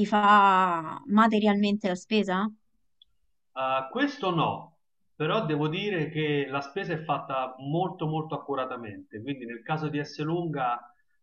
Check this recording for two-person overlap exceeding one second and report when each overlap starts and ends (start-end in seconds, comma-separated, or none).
none